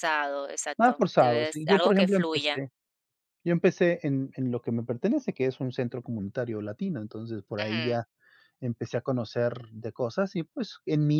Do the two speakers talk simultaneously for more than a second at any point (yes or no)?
yes